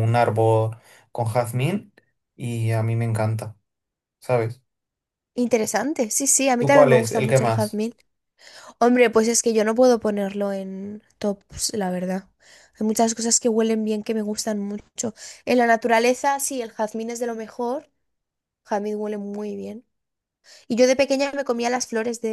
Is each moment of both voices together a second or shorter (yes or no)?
no